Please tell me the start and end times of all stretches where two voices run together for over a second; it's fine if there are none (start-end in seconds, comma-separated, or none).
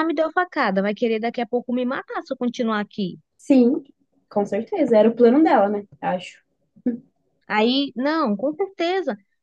none